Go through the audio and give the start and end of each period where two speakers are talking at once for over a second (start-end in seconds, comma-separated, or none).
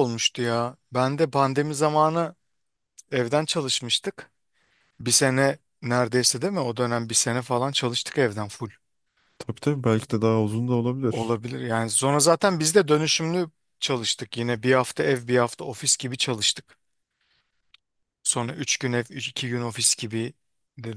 none